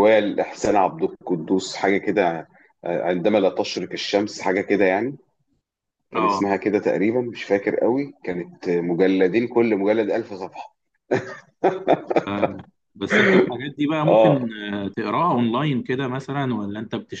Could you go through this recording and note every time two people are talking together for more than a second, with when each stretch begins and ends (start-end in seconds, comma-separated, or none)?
none